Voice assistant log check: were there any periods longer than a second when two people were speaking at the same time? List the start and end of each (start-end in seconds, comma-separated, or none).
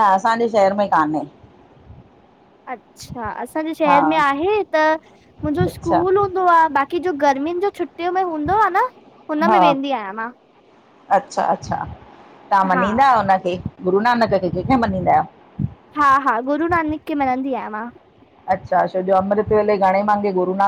none